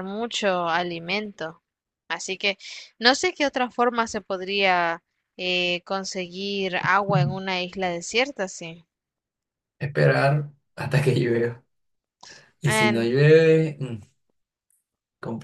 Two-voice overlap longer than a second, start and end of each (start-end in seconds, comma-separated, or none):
none